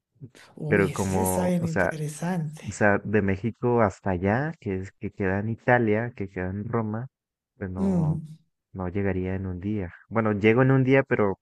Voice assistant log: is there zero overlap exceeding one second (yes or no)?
no